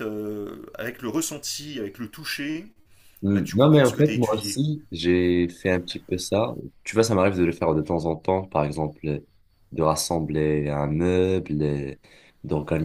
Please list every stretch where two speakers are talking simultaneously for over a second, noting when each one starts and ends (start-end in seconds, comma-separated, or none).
3.3-4.6